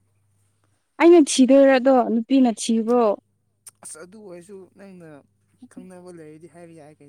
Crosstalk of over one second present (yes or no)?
no